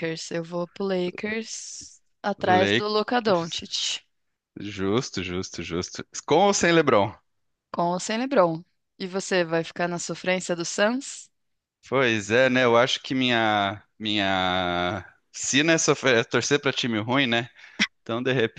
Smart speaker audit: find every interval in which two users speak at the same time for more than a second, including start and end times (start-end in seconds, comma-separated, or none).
2.4-3.6